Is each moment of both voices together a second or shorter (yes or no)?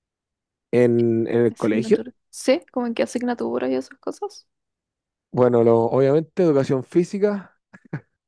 yes